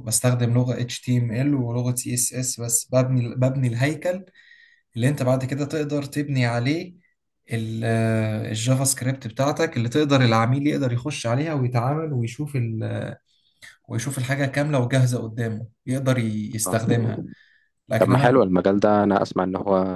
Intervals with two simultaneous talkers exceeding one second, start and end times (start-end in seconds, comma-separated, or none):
none